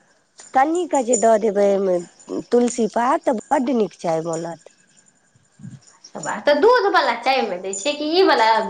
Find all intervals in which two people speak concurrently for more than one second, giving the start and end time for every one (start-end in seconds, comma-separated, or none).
none